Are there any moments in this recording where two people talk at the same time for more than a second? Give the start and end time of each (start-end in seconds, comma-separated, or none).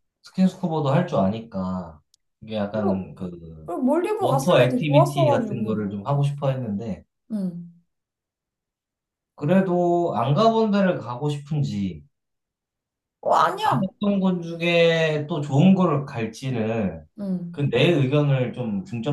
4.2-5.8